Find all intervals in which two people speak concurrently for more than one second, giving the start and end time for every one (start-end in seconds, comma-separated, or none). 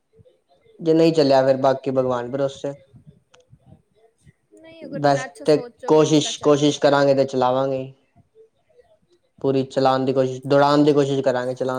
5.0-6.7